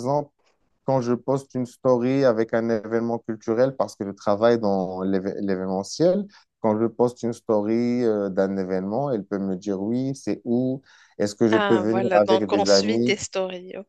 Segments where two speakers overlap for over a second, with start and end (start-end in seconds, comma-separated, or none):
11.5-13.2